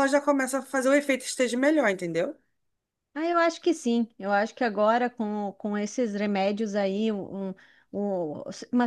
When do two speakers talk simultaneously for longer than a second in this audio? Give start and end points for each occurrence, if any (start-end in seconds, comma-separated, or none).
none